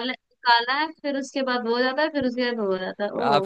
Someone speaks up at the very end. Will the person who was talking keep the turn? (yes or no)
no